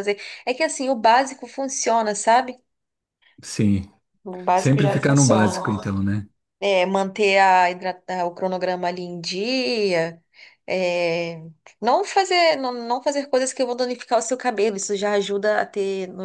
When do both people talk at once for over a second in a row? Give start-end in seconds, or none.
4.5-6.0